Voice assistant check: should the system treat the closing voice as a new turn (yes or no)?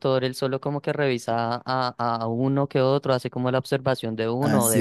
yes